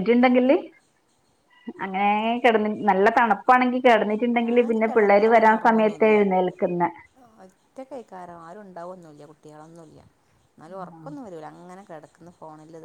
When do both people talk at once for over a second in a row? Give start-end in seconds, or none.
none